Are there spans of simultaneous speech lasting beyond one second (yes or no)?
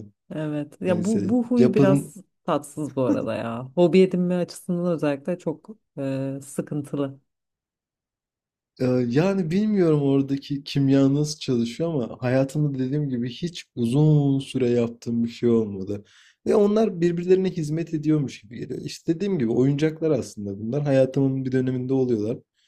yes